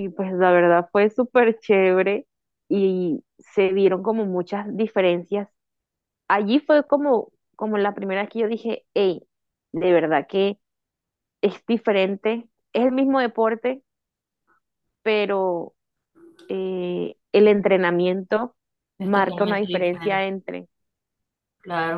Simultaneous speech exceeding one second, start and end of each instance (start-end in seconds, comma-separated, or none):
19.0-20.2